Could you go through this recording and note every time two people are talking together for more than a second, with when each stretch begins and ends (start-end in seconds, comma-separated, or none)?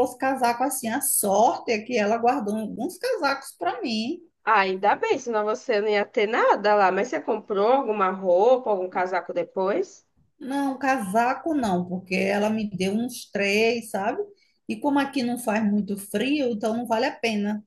none